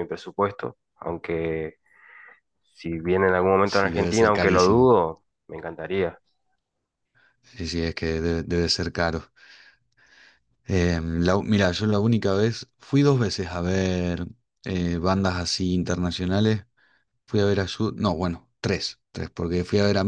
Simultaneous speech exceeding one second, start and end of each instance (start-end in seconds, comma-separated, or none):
3.6-5.0